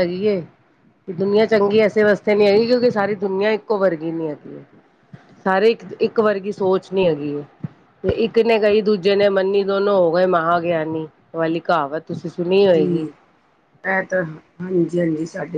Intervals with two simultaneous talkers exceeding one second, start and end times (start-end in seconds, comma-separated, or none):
none